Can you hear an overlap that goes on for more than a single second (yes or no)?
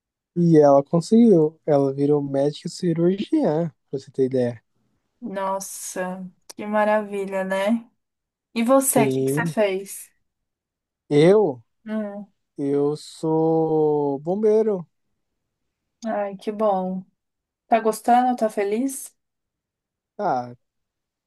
no